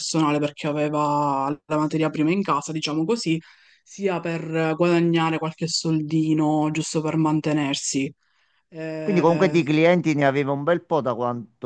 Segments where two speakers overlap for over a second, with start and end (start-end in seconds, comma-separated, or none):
none